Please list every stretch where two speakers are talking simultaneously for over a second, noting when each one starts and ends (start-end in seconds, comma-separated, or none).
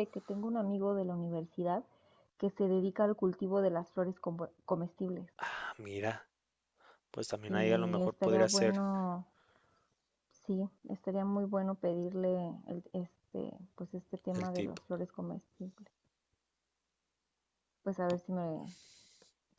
7.5-8.8